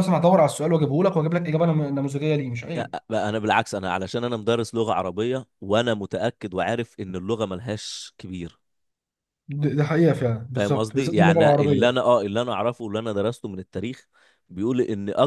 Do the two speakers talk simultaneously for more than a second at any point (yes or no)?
yes